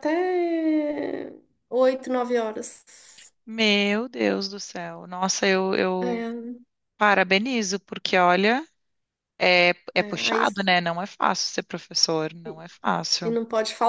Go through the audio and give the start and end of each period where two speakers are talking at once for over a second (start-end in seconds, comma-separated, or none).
none